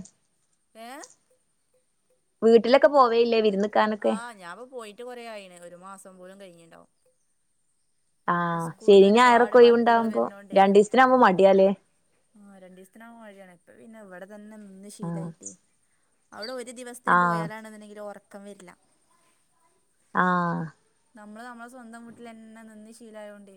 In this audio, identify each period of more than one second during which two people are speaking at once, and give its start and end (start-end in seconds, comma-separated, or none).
8.4-10.2